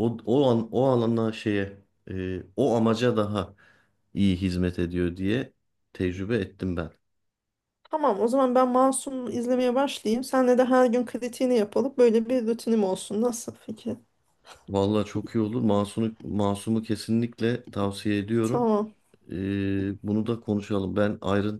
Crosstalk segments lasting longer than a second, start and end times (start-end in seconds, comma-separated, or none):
none